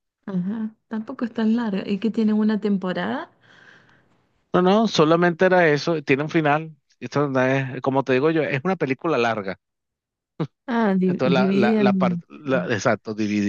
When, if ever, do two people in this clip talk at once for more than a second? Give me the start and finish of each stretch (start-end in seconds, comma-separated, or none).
11.1-12.2